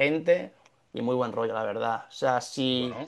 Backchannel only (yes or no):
yes